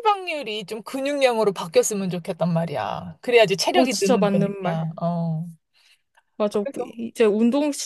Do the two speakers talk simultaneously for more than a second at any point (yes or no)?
yes